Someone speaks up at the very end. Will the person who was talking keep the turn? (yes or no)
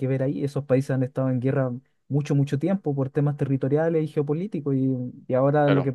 yes